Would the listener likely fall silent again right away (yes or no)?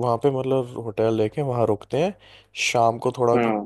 yes